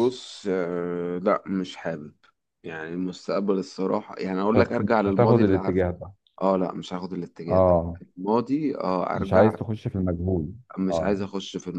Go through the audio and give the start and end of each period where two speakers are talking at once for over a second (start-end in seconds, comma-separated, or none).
4.5-5.8